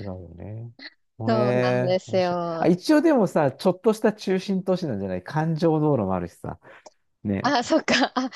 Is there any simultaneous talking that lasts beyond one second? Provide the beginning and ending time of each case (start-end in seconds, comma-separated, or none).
1.3-2.7